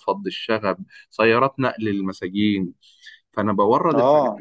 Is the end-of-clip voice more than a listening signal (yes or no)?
no